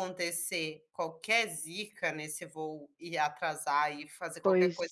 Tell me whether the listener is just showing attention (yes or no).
yes